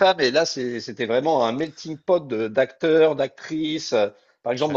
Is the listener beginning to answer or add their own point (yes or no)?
no